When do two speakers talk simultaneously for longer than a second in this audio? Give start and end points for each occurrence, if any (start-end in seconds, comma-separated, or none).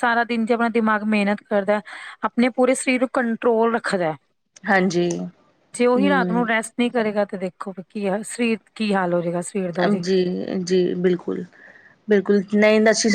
none